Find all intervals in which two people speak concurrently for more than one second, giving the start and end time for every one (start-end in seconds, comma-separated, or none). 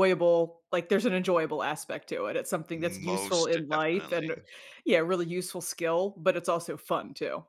2.7-4.3